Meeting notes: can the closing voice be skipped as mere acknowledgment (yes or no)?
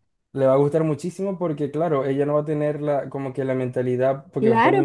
no